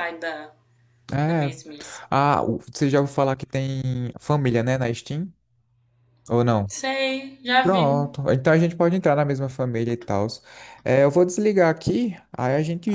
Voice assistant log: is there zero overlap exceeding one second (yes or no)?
yes